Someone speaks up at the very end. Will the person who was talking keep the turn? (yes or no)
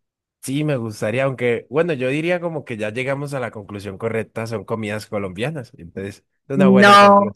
no